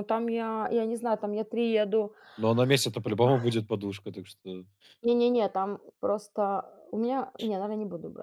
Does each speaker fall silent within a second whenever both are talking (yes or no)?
yes